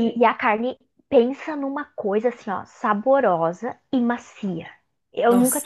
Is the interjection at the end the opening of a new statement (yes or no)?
no